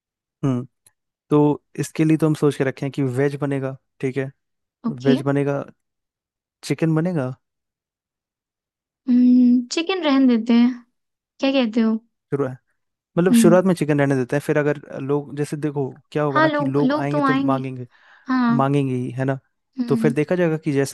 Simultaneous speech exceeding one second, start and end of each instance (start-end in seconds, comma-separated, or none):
16.3-17.6